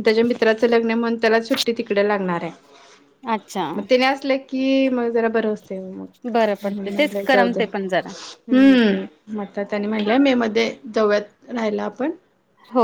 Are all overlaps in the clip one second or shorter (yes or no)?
no